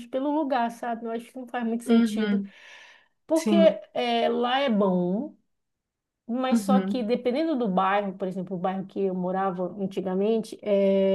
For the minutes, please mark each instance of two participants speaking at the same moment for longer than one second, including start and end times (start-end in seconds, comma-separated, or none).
none